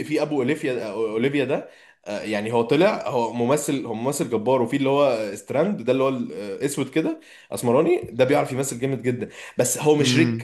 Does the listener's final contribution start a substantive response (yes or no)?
no